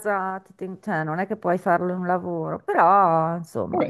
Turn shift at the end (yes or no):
yes